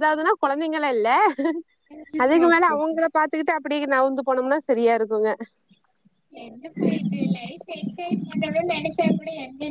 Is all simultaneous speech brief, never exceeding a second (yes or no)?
yes